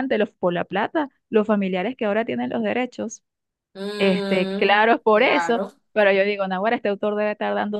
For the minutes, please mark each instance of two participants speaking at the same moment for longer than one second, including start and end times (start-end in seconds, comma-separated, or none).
4.0-5.7